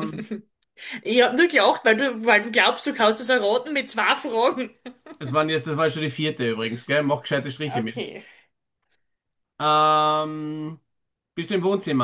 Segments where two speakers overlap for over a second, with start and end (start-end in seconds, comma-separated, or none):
none